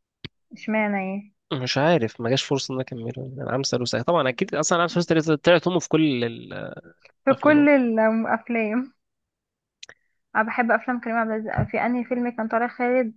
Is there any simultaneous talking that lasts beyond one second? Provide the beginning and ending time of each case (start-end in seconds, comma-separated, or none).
none